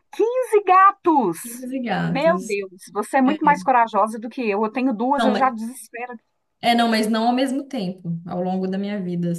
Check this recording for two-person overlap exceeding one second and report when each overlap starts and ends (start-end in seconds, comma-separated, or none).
none